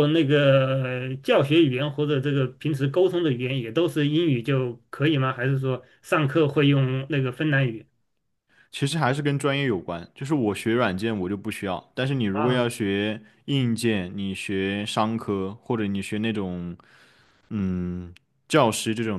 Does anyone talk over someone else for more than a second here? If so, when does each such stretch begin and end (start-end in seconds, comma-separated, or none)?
none